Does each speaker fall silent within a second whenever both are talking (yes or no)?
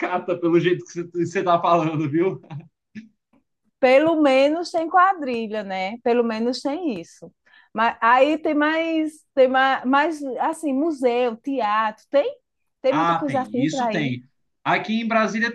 no